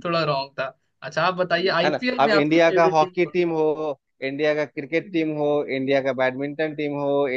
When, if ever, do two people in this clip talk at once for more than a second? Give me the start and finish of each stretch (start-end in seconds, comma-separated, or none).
1.8-3.5